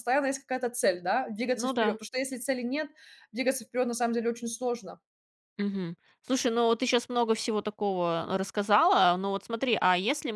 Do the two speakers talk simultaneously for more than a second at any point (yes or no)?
no